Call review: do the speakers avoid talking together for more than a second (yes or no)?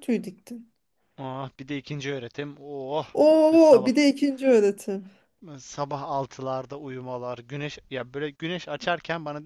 yes